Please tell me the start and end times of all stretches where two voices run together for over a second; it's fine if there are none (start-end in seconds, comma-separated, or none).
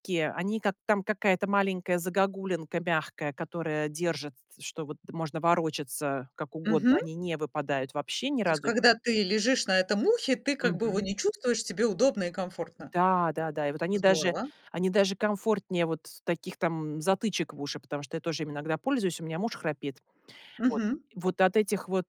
none